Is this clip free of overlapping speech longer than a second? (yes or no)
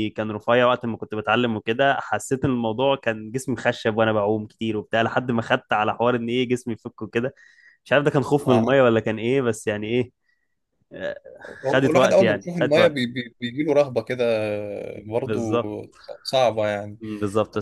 no